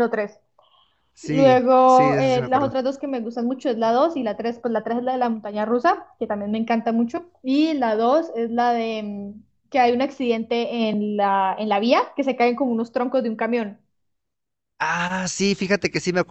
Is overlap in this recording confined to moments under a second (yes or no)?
no